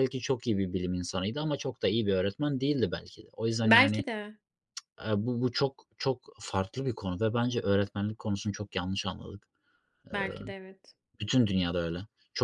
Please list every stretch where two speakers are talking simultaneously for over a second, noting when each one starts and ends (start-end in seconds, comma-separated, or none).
none